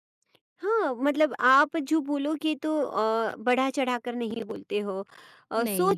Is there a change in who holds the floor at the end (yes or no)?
no